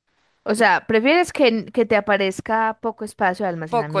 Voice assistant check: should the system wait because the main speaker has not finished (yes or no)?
no